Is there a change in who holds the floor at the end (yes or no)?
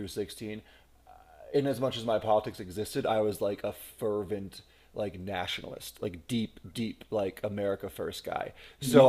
no